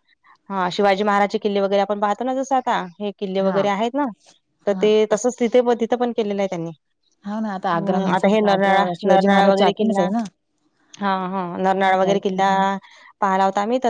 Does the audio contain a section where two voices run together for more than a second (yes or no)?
yes